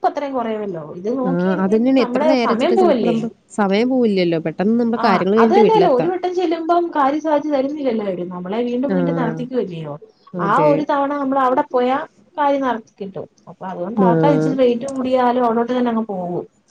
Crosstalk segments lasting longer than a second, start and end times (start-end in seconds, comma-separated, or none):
1.3-3.2